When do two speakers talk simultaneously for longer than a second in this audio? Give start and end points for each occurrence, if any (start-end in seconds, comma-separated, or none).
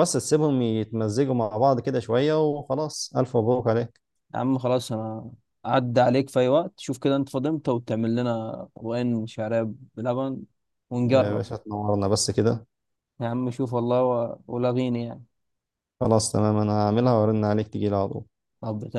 none